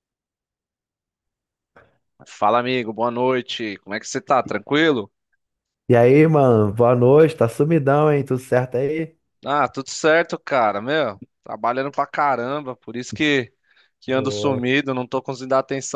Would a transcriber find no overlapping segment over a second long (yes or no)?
yes